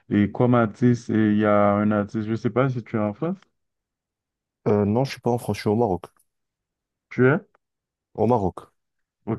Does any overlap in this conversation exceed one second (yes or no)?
no